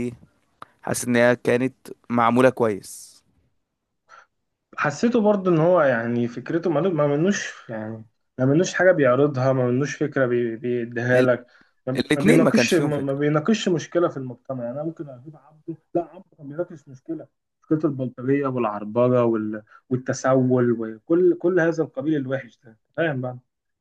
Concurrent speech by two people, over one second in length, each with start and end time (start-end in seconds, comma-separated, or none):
12.0-13.2